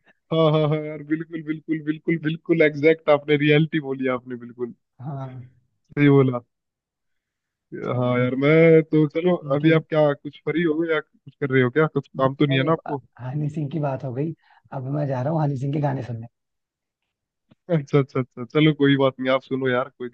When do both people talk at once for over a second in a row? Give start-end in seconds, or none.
none